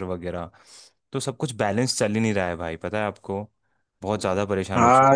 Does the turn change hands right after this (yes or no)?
yes